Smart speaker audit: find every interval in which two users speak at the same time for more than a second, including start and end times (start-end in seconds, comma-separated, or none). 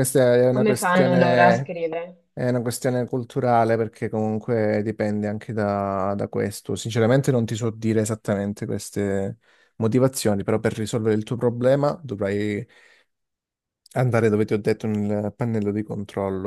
0.5-1.7